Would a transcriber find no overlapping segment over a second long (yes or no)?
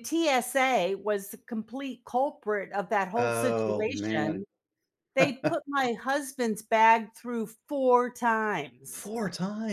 no